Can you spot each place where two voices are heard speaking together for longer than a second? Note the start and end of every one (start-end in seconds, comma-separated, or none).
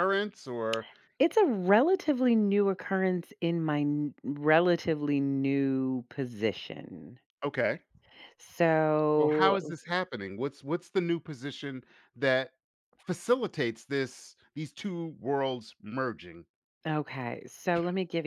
none